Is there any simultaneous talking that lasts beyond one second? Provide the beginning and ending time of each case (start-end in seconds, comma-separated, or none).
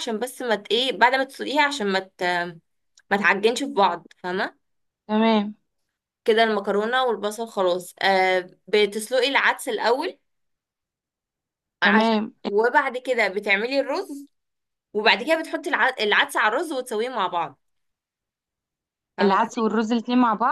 none